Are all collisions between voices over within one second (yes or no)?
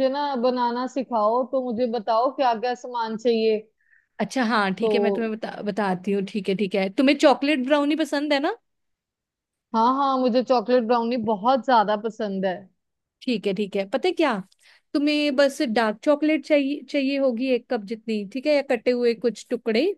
yes